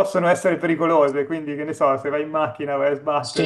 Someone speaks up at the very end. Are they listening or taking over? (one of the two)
taking over